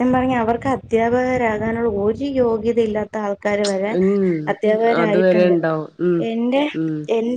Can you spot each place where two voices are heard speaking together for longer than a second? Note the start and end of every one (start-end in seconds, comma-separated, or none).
none